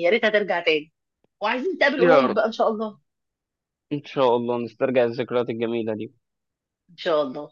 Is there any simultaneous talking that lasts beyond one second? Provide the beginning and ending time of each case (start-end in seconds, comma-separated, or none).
none